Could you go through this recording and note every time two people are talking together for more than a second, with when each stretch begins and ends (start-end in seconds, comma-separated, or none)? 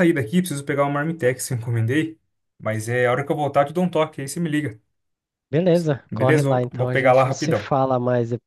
6.1-7.7